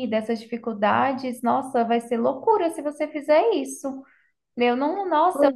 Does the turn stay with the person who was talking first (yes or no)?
yes